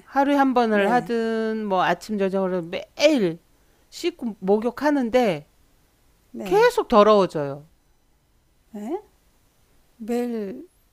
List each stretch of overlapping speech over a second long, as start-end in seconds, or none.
none